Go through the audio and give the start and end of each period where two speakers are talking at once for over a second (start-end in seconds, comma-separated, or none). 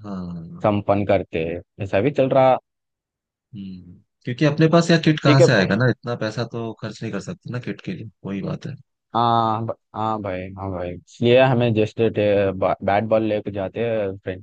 none